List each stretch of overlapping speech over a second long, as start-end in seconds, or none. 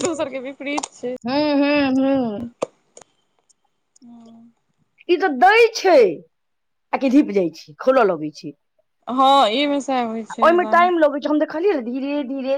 none